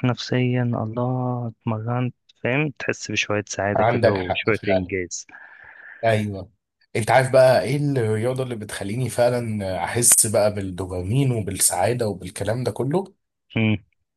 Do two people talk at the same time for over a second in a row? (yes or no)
yes